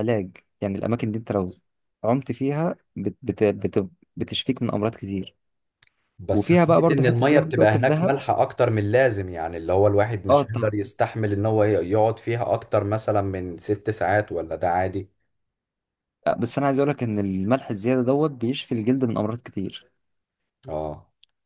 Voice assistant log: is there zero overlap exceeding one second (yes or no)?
no